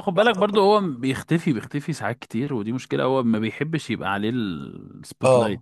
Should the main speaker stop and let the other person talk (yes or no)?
yes